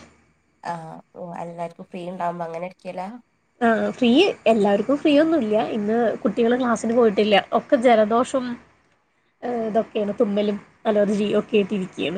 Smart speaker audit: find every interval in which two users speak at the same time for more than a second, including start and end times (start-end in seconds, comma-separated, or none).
none